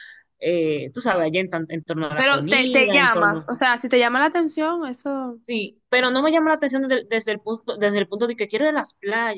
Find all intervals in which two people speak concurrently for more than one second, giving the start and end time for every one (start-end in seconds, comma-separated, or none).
2.1-3.5